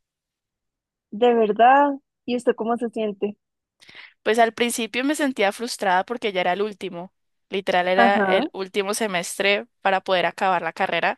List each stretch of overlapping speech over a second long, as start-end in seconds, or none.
none